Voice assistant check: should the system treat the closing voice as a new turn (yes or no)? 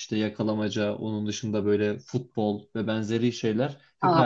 no